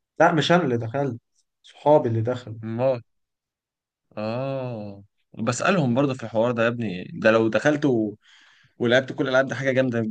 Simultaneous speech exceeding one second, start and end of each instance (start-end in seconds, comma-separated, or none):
none